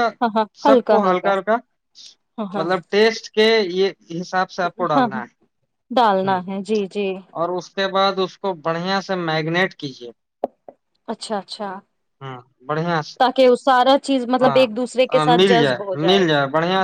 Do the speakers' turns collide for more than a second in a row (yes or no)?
yes